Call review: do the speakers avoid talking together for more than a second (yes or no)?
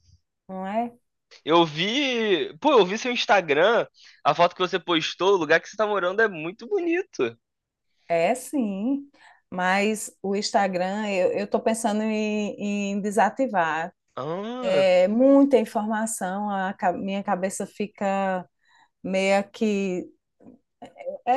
yes